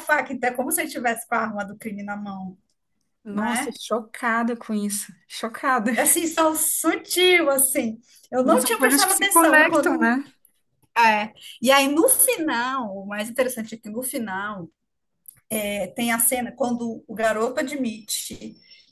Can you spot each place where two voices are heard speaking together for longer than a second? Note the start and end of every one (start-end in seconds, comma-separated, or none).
8.4-10.1